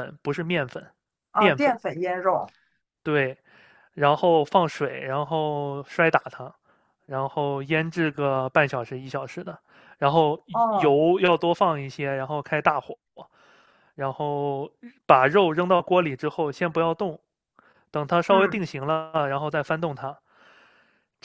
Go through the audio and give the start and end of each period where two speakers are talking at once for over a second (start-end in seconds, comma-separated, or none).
none